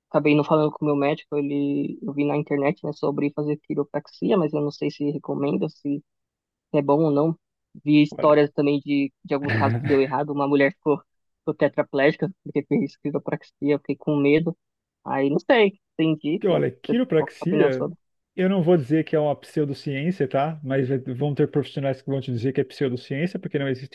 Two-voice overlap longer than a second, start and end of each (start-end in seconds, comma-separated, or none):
16.4-17.9